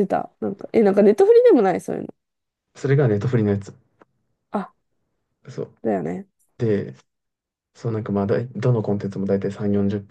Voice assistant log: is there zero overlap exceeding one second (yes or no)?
yes